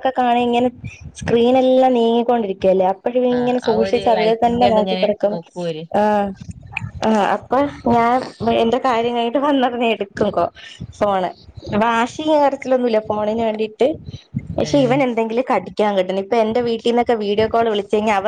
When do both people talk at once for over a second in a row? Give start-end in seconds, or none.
3.4-5.3